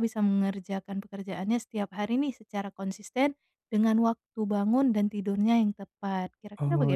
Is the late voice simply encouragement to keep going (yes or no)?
no